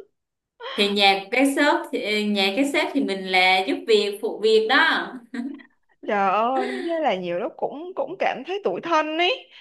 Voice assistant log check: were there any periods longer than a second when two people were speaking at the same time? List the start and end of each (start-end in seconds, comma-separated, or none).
none